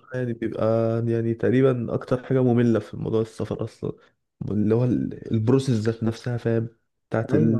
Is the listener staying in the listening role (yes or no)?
yes